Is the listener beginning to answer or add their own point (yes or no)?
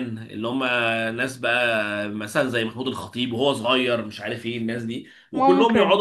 no